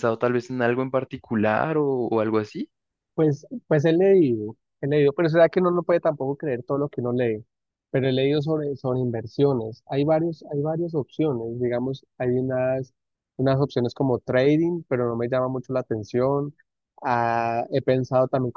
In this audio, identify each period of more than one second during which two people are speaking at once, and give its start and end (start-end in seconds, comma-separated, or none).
none